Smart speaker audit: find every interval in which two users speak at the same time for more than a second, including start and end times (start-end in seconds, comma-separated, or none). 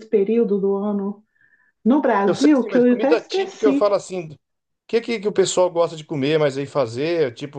2.2-4.0